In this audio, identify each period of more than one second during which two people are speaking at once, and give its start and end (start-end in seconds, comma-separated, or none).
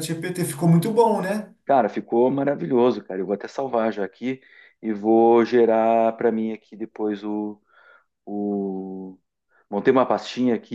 none